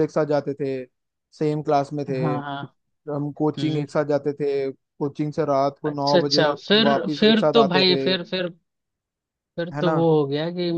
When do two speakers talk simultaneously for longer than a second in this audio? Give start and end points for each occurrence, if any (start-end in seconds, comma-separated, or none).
5.9-8.0